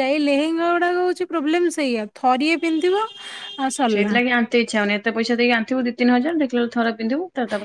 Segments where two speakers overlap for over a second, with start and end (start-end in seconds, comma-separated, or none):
none